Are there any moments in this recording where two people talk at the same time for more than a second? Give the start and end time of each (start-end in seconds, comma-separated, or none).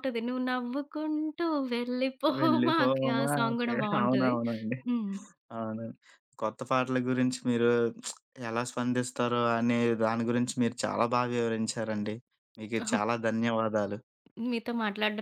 2.4-4.3